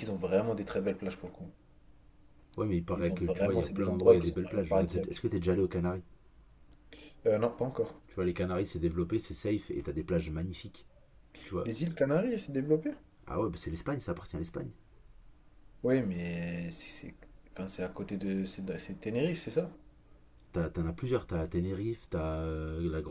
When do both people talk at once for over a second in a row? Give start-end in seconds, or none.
3.0-5.2